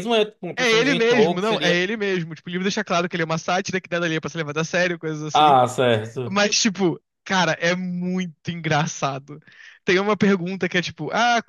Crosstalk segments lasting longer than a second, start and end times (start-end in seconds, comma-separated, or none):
0.6-1.8